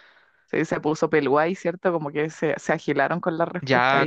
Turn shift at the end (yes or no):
yes